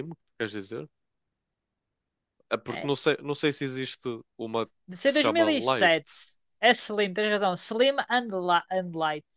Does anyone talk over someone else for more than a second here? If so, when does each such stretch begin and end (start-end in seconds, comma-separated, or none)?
4.9-6.2